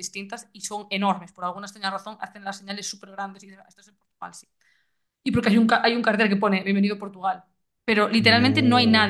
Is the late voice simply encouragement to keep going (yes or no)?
yes